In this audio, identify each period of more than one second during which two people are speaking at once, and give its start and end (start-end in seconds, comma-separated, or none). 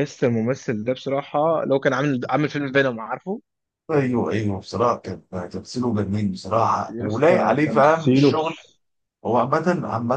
6.9-8.6